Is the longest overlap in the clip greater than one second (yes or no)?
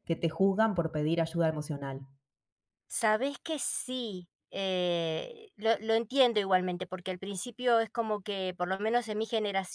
no